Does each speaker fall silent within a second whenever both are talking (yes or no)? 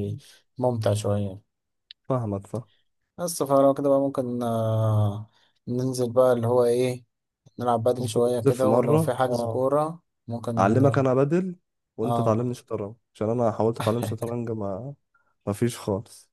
no